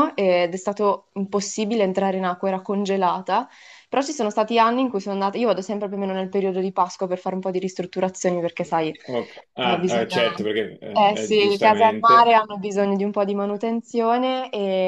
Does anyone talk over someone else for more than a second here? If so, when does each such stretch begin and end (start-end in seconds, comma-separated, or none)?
10.9-12.3